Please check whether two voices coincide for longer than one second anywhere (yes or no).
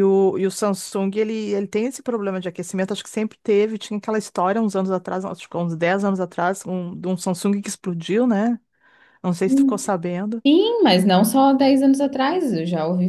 no